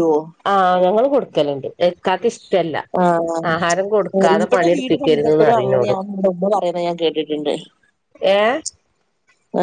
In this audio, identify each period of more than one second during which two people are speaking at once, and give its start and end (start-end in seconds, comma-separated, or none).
4.3-5.9